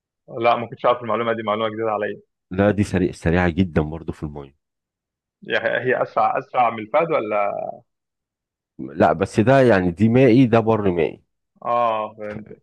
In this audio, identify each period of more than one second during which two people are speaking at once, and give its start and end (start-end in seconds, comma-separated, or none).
none